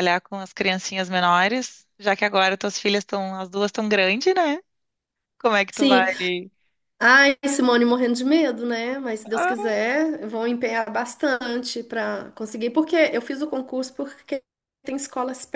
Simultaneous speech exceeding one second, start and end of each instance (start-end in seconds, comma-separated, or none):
none